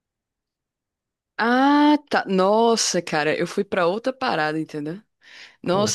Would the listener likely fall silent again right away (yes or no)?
yes